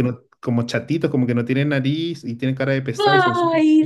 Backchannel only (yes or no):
no